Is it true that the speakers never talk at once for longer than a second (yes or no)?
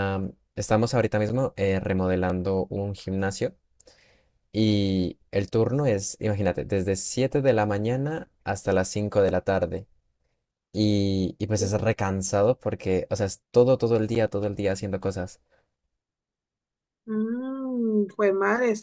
yes